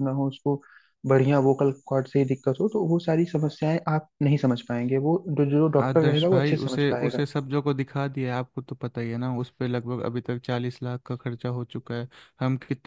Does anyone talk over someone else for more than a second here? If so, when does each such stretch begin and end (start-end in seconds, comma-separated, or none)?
5.8-7.2